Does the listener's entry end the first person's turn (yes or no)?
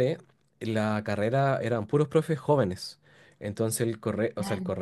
no